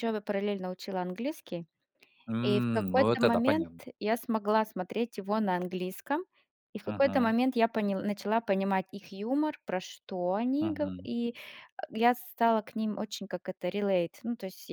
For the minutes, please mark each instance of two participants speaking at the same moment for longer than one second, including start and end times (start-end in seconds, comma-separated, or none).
2.4-3.8